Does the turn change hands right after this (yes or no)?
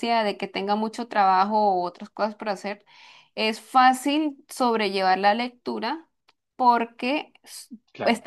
no